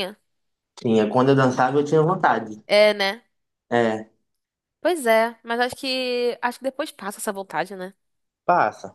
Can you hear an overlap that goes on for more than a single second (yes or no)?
no